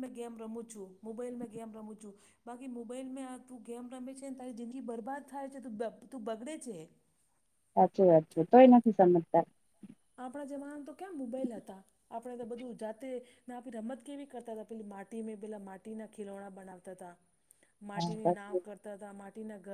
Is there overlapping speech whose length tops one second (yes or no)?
no